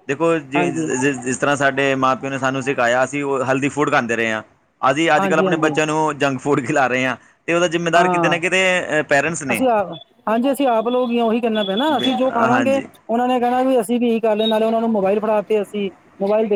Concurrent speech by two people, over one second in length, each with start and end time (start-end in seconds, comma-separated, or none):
none